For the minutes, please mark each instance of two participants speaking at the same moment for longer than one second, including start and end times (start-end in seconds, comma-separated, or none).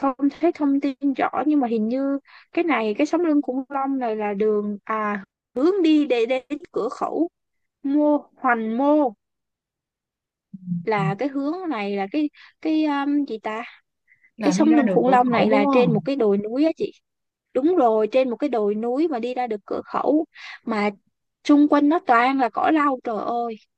14.4-16.1